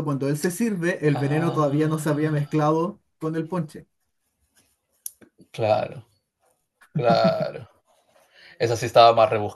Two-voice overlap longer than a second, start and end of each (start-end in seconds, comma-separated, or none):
1.1-2.5